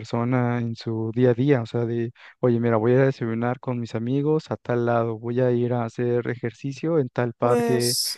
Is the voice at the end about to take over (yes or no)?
no